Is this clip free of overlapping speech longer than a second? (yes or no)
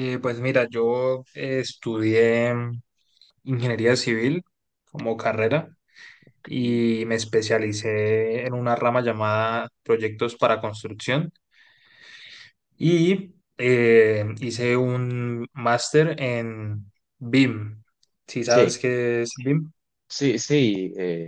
yes